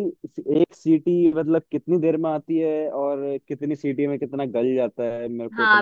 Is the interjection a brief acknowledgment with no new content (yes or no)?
no